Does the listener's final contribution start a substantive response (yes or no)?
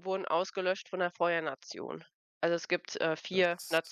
no